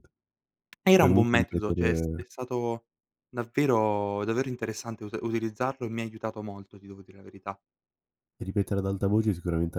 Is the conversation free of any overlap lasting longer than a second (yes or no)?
no